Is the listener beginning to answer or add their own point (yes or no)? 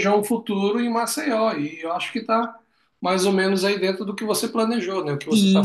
yes